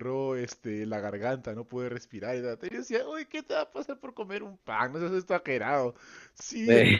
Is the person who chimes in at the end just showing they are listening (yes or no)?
yes